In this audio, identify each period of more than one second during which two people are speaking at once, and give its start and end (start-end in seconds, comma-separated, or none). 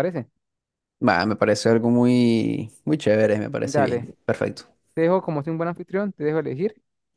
none